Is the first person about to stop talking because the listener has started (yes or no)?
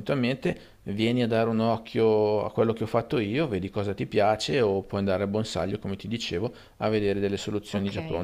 yes